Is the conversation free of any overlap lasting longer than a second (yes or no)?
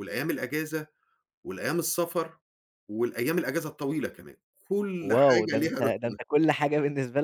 no